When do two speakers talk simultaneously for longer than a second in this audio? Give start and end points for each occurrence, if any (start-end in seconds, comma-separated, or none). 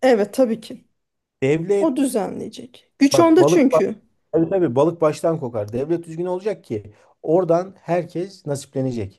none